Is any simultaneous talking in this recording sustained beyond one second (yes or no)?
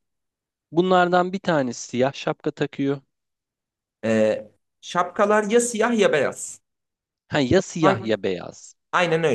no